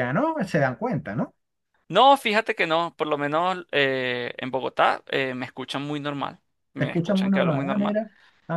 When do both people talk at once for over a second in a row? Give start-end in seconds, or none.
6.8-8.0